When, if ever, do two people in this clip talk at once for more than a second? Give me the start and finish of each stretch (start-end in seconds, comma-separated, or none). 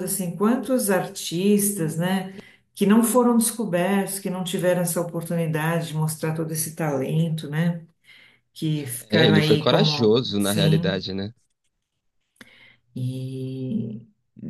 9.1-11.0